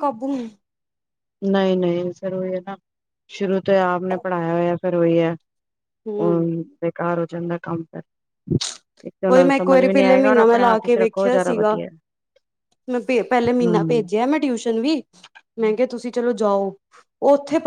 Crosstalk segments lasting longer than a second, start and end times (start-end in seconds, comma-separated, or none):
9.3-11.8